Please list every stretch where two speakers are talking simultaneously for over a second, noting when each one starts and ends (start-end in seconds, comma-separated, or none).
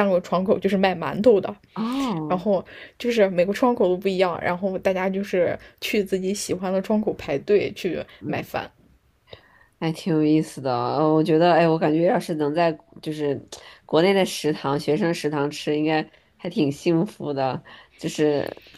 none